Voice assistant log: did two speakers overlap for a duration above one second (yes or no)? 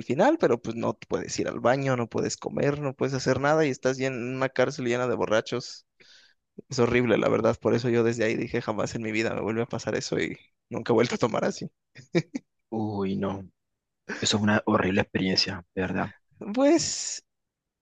no